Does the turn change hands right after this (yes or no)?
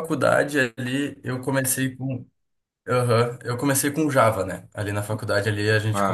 no